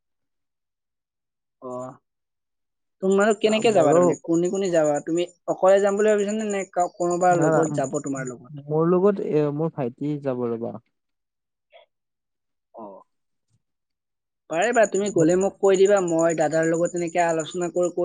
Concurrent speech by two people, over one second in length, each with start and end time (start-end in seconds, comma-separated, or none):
none